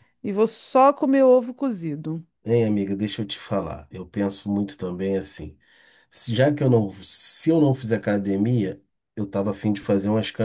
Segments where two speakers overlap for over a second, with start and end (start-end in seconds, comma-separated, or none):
none